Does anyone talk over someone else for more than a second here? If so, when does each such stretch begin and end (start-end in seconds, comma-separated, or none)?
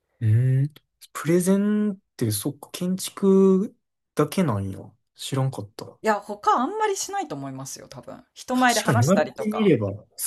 8.5-9.7